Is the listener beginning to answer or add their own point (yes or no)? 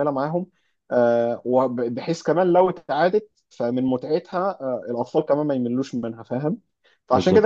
no